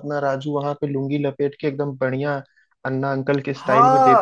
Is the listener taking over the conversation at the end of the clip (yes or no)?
yes